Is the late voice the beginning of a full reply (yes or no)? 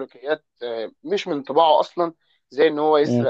no